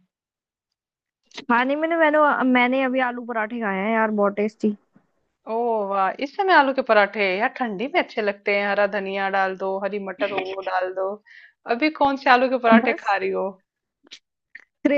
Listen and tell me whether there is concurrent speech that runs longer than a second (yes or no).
no